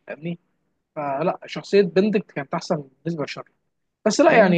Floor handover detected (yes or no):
no